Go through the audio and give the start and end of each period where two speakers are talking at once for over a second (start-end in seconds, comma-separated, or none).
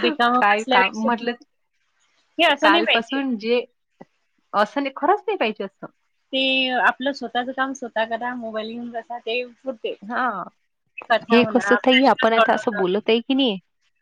11.3-12.7